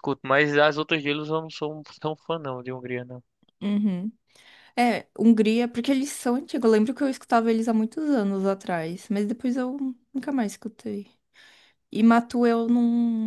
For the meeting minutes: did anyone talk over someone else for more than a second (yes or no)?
no